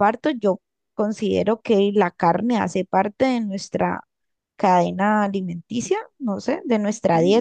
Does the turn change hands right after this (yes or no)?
yes